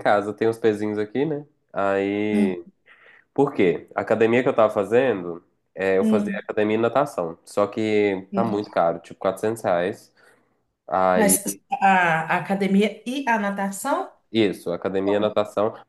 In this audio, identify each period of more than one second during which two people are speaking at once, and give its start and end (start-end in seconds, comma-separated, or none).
none